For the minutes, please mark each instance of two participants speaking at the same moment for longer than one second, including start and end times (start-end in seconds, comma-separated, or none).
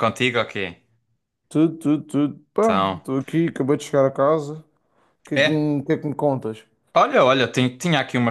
none